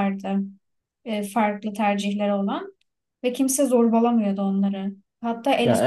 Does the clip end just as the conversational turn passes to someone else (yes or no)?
no